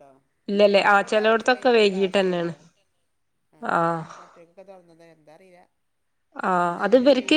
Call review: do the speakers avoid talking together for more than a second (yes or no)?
no